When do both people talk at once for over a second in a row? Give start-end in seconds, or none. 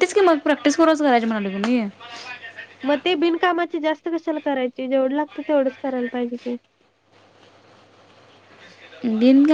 none